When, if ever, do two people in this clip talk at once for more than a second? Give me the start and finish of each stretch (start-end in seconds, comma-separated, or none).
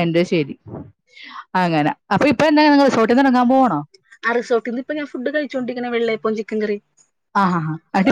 none